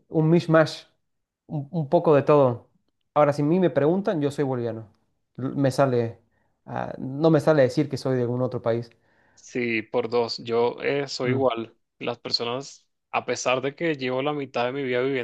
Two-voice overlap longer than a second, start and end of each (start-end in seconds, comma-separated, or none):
none